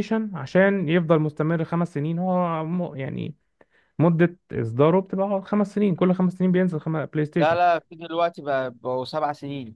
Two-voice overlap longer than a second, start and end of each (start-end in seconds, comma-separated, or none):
none